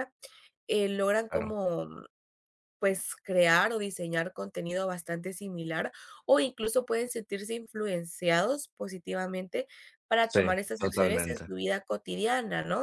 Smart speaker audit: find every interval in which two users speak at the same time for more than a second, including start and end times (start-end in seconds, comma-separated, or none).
10.3-11.5